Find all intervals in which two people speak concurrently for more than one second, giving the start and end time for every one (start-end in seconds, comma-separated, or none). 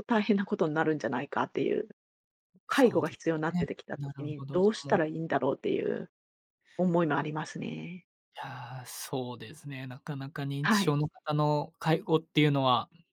2.7-5.0